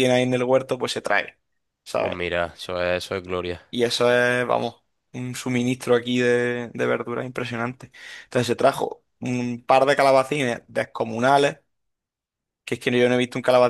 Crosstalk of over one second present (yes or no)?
no